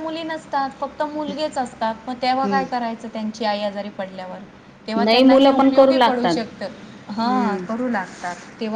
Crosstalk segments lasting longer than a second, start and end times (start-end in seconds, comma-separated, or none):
5.0-6.4